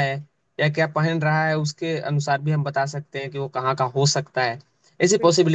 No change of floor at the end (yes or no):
yes